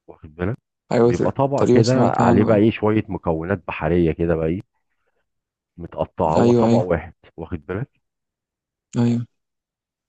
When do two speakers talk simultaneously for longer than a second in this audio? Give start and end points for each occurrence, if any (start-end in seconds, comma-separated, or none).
1.0-2.6